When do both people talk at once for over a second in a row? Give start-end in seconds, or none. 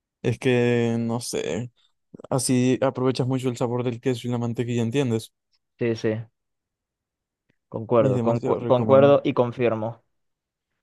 8.0-9.2